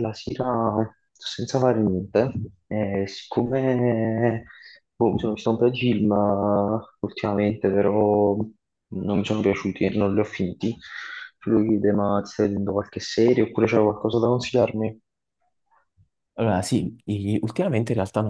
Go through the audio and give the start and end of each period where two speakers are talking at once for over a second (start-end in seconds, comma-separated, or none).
none